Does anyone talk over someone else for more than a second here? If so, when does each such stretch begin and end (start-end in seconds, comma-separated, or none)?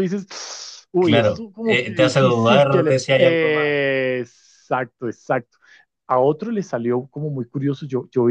1.0-3.8